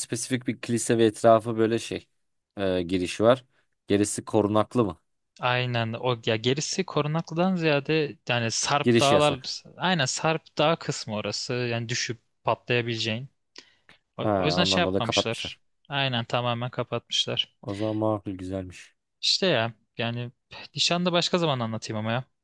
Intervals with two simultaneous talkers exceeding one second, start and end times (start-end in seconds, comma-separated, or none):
14.2-15.6